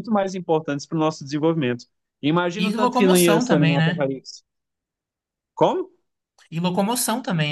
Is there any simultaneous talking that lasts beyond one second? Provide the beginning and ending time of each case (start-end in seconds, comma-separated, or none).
2.6-4.0